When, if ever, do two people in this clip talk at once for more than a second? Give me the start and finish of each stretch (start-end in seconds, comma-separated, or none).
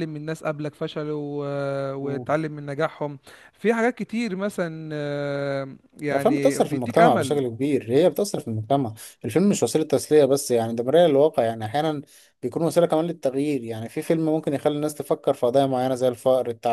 6.1-7.4